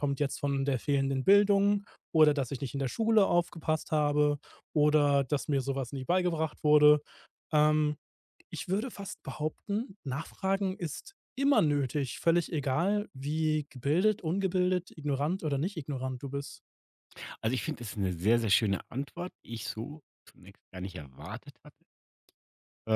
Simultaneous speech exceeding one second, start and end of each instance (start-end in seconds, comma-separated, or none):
none